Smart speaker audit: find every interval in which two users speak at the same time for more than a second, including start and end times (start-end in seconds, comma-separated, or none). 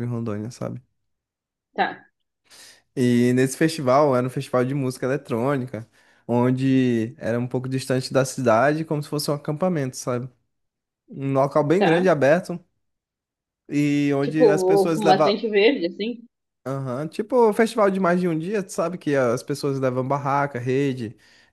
14.2-15.4